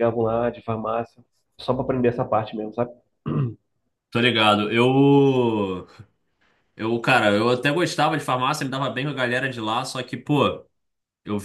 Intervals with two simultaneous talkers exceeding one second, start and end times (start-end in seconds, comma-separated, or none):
none